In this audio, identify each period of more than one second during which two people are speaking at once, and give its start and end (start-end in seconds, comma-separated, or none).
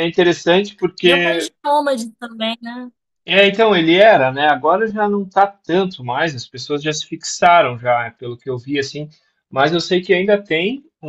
none